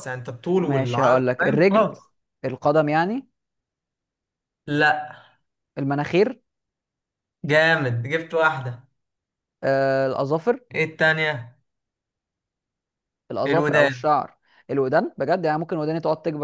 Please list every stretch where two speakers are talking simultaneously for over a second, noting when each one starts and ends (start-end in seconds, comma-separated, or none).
0.6-1.9